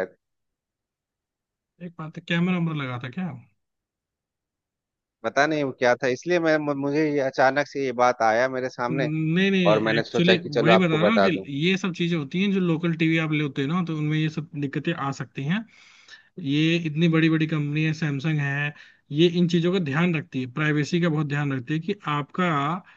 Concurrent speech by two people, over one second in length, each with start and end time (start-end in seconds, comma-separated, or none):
9.7-11.3